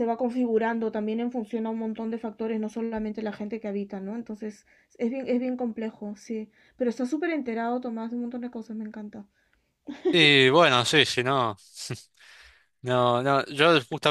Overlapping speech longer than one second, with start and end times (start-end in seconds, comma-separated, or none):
none